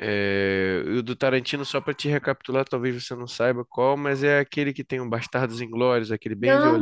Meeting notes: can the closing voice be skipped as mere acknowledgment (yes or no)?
no